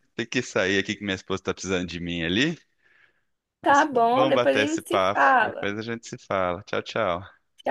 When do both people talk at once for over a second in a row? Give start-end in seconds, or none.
3.7-5.7